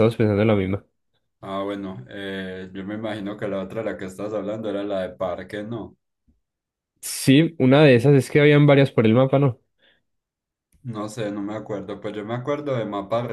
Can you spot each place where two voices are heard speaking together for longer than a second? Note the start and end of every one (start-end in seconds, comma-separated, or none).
none